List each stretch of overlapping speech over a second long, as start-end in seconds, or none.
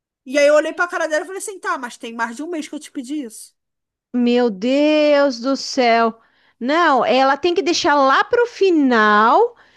none